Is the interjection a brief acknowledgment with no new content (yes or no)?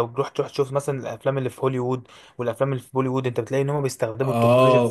no